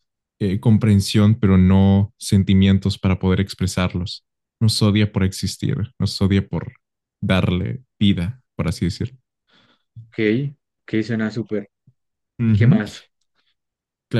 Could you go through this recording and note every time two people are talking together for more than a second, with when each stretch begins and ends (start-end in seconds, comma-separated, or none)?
none